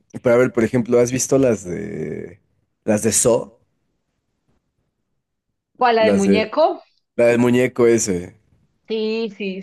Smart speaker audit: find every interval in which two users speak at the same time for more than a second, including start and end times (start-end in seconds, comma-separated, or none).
none